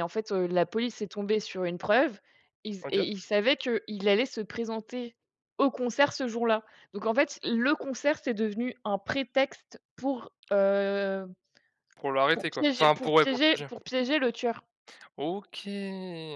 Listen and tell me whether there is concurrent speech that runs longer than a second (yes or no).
yes